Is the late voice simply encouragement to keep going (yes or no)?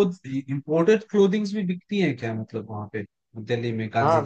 no